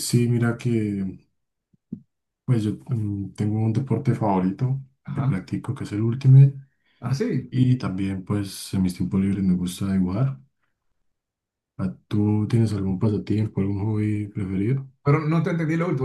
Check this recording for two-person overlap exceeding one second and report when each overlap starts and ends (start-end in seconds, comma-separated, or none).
none